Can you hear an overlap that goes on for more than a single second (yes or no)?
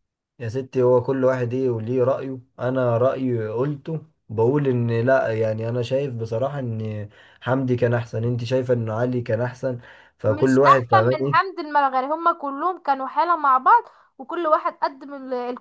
yes